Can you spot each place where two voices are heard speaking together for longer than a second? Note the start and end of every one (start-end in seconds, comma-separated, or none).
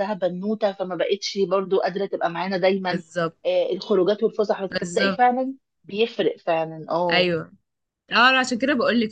none